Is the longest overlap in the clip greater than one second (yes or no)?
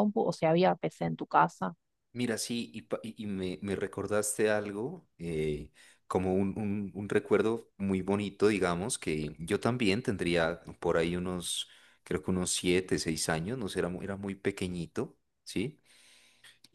no